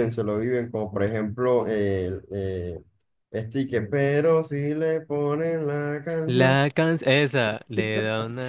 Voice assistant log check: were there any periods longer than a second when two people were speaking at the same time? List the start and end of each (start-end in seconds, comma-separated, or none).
none